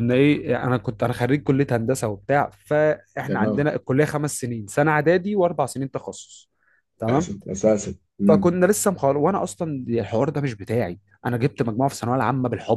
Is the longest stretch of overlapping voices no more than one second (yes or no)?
yes